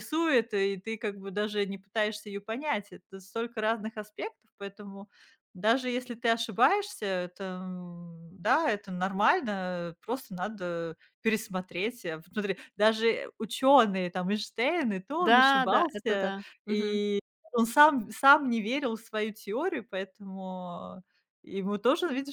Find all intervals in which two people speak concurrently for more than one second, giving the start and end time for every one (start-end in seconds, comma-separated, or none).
15.2-17.0